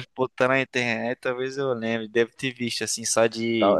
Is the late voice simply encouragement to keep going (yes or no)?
no